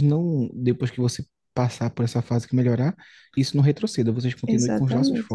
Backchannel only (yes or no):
no